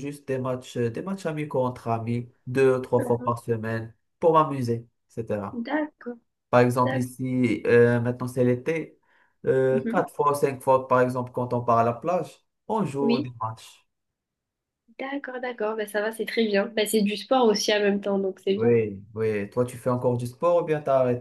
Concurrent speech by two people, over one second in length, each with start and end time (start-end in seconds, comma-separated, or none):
none